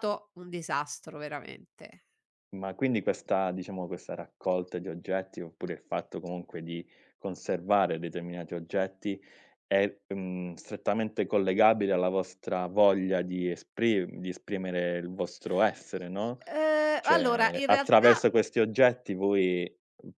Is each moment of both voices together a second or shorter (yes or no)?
no